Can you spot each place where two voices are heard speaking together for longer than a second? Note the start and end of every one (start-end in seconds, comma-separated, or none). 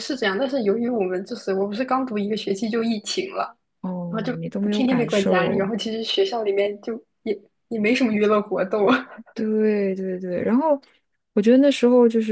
4.1-5.7